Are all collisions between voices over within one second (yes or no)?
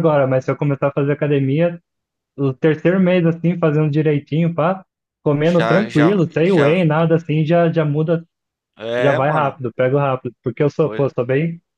no